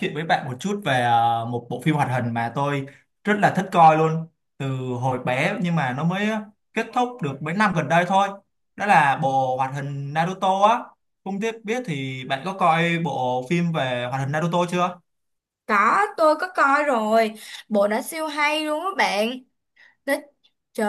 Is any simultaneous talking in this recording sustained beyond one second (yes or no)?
no